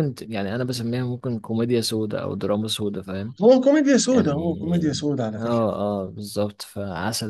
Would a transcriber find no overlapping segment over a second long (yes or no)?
no